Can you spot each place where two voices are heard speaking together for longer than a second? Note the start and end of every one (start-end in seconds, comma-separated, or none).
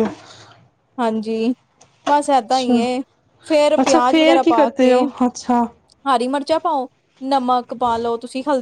3.8-5.6